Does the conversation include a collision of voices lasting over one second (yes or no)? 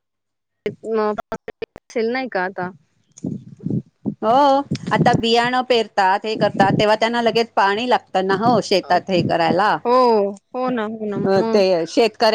no